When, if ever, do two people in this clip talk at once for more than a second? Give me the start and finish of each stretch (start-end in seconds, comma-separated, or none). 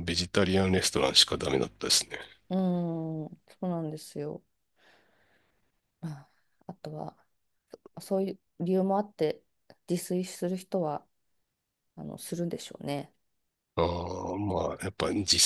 none